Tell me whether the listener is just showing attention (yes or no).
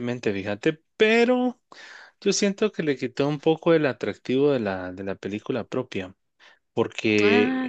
yes